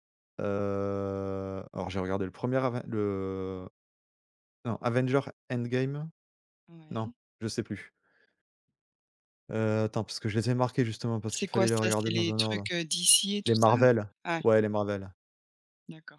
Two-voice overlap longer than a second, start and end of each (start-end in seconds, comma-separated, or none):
11.3-12.7